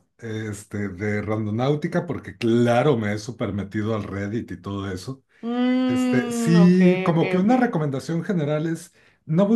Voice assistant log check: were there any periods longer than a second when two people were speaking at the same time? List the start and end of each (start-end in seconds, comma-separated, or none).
5.9-7.8